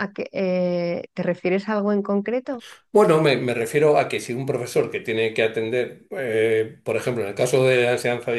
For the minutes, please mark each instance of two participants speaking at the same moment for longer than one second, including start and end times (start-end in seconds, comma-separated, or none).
none